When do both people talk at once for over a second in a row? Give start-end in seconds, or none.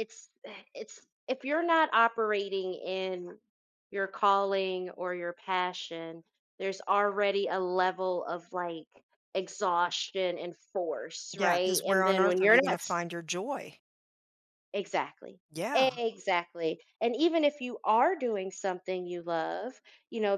11.4-12.8